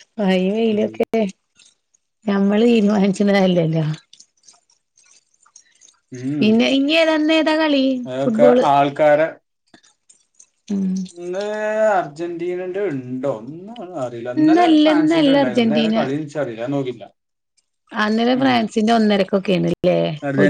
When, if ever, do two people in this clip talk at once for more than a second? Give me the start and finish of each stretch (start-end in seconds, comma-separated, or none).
14.4-16.0